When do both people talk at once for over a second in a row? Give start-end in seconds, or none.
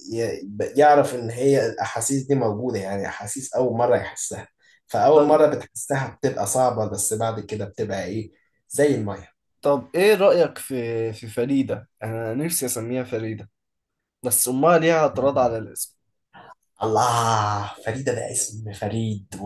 none